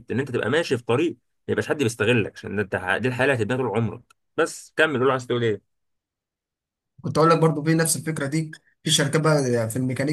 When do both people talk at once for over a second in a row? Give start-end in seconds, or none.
none